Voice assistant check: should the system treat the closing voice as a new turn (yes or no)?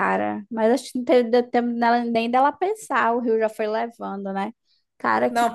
yes